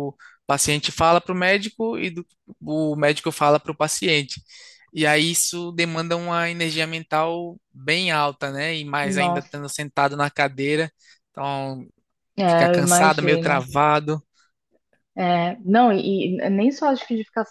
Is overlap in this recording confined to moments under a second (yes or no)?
no